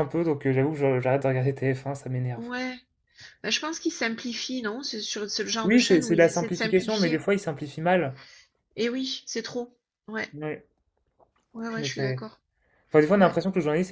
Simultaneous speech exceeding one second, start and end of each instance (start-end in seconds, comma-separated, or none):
5.6-7.3